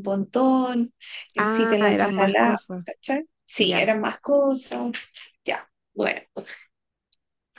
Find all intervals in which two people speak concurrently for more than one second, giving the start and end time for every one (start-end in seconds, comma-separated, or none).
1.4-2.9